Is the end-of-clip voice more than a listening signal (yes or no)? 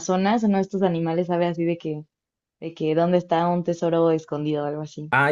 yes